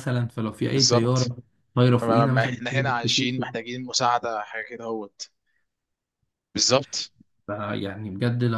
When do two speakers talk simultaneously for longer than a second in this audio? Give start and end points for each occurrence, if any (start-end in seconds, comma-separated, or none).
2.0-3.5